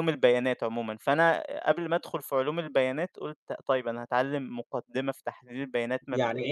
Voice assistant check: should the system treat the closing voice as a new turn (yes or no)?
yes